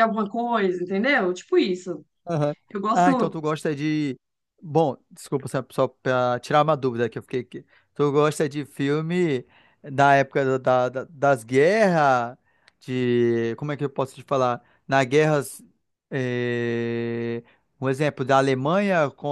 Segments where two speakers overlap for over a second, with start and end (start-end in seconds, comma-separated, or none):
none